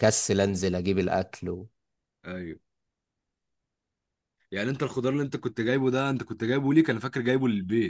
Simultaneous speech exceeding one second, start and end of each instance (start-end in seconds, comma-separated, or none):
none